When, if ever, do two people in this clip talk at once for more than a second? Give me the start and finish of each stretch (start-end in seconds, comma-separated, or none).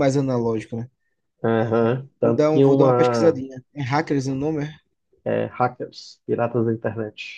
2.2-3.4